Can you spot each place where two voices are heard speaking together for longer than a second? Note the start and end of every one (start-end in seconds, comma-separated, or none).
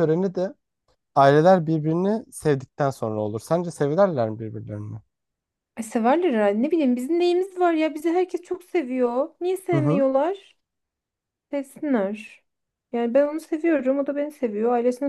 none